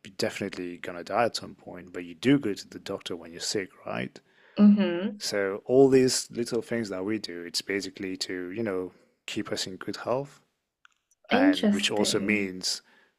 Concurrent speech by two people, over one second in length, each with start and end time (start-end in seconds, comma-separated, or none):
11.3-12.5